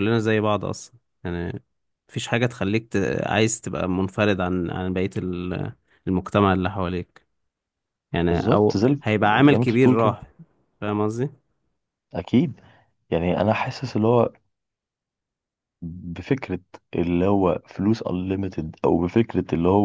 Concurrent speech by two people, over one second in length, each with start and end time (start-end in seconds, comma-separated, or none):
8.3-10.2